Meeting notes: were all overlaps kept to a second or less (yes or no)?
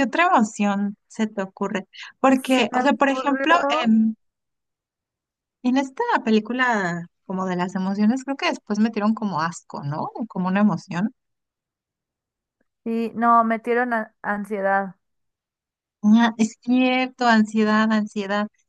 no